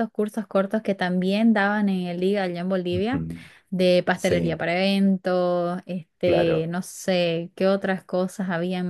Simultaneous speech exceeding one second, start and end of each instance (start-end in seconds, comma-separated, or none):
none